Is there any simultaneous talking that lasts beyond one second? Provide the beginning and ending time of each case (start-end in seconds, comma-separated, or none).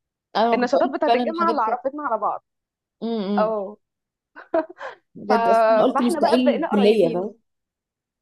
0.5-1.8, 5.9-7.3